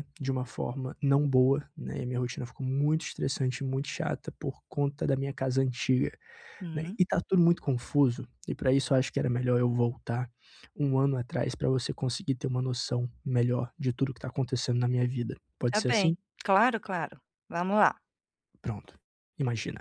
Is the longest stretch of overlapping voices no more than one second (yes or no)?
yes